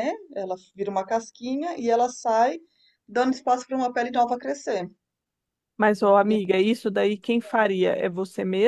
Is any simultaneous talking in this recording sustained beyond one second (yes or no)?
no